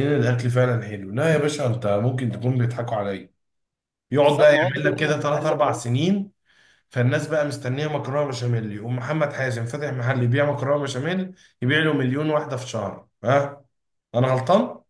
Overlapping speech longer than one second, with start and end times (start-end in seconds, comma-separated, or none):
4.1-5.8